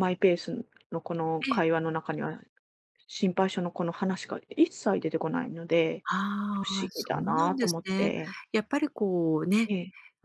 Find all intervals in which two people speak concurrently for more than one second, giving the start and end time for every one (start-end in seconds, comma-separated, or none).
6.5-8.1